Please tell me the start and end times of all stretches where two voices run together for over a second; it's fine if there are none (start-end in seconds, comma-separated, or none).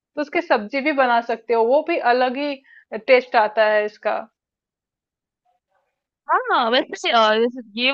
none